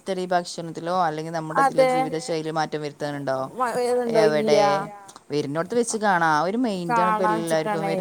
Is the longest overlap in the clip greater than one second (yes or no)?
no